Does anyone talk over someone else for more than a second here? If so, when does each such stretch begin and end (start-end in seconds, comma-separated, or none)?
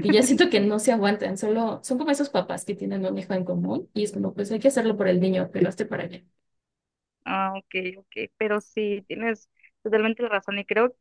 none